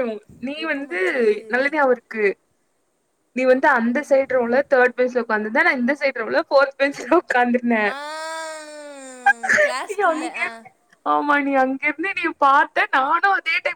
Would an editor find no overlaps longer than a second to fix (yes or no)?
yes